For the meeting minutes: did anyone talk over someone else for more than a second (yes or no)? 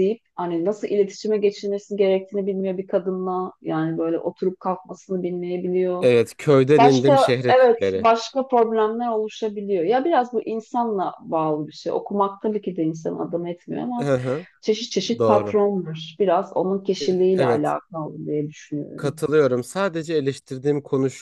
yes